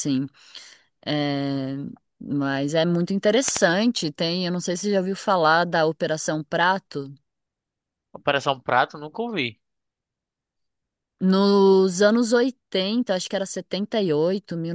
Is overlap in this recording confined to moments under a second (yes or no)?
yes